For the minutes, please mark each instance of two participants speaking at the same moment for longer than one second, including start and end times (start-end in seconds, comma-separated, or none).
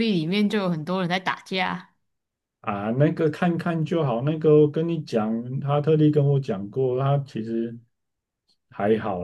none